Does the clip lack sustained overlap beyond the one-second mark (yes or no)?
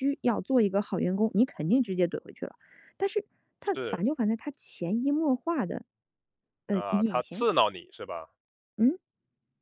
yes